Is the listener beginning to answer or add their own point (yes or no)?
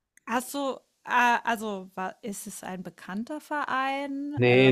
yes